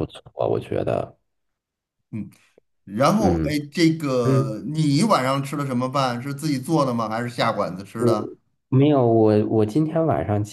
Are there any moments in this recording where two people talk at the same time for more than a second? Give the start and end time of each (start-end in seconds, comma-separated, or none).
none